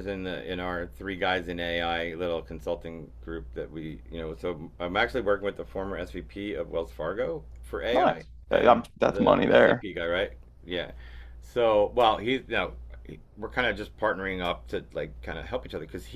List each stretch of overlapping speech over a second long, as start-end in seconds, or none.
7.9-9.8